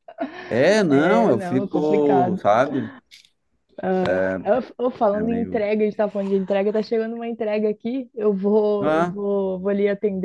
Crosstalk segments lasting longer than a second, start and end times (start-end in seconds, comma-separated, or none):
0.9-2.4